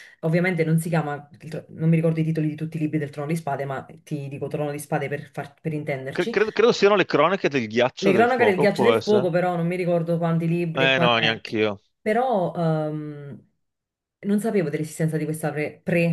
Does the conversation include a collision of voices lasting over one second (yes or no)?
yes